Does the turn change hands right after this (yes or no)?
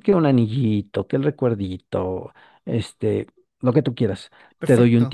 no